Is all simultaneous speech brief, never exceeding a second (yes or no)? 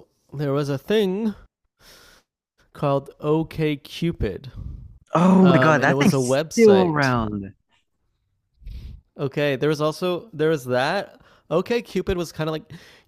no